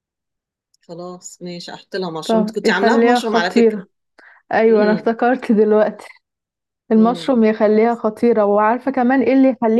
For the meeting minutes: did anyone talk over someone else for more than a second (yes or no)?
yes